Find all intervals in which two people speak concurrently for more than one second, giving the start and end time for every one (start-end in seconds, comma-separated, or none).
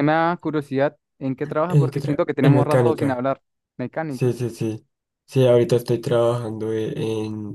1.7-3.3